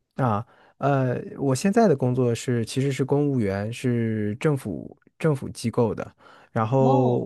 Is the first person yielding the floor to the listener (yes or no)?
no